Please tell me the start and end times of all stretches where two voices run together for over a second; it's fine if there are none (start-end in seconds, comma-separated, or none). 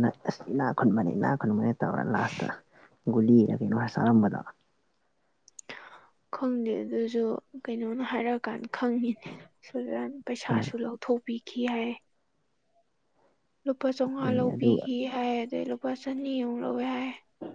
none